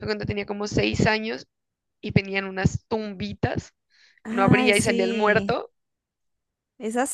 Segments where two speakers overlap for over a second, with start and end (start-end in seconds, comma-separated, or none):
4.3-5.6